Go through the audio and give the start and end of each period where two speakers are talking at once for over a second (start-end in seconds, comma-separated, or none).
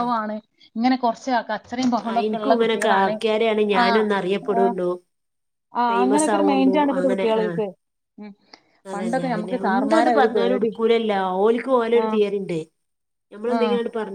5.9-7.6, 8.9-10.7